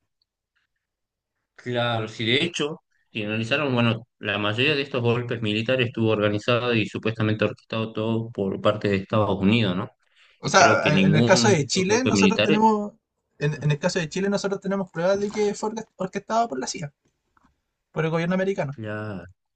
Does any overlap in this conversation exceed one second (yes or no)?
yes